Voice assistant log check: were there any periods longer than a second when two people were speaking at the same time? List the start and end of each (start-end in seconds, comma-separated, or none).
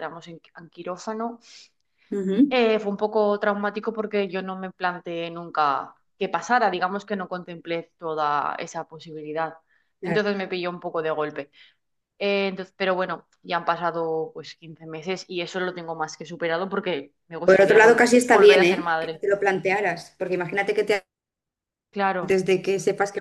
17.4-19.2